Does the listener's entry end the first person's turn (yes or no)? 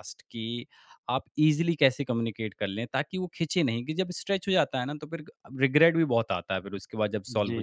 yes